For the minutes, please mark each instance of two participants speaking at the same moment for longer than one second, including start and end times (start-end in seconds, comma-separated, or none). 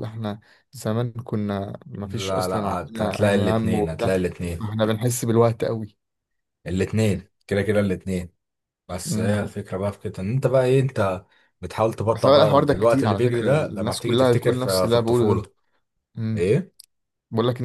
2.0-4.7, 12.1-15.4